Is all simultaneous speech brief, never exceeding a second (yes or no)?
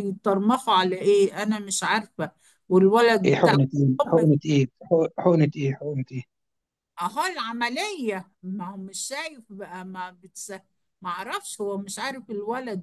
yes